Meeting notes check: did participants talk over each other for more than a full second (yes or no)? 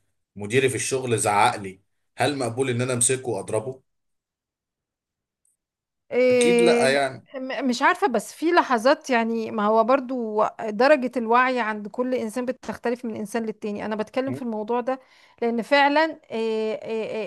no